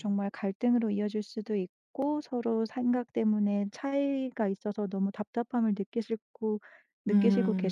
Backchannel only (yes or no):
no